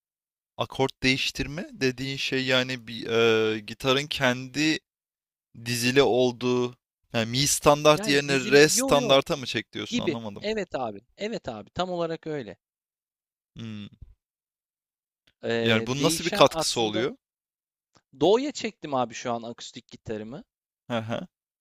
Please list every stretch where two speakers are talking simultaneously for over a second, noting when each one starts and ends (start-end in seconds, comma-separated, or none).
7.9-9.2, 15.6-17.1